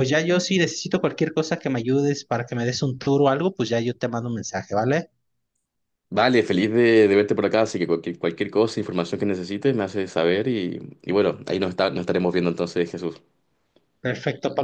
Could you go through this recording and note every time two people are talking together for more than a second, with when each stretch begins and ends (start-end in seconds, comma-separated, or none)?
none